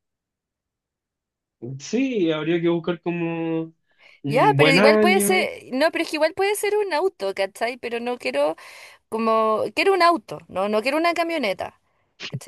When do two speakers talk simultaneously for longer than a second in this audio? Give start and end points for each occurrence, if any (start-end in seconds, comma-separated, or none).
4.3-5.5